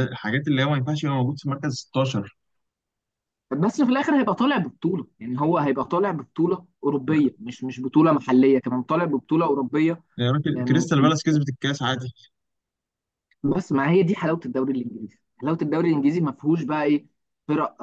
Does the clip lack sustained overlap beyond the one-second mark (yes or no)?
yes